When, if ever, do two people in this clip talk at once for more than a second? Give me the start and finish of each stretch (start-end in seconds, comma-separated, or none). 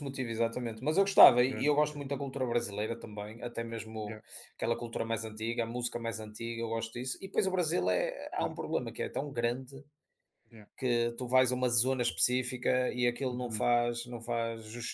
none